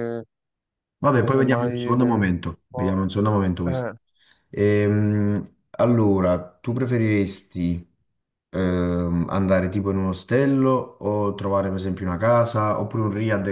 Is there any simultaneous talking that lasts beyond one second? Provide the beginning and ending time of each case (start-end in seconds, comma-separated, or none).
1.1-2.3